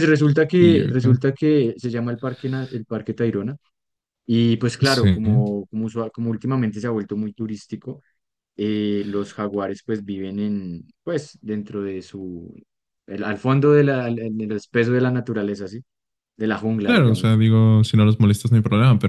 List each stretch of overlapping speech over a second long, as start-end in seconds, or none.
none